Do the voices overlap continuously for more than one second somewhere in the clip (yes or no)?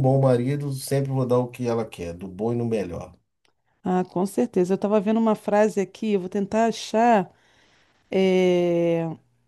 no